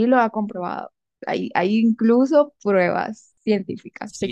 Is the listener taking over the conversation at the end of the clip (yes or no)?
yes